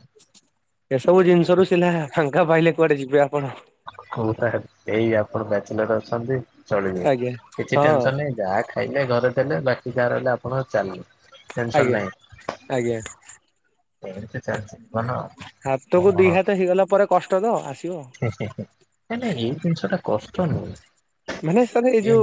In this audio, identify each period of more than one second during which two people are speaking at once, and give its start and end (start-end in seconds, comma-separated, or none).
none